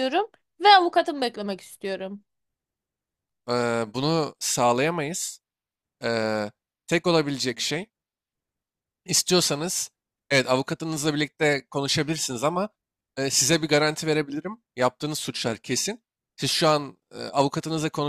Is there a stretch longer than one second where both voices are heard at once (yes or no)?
no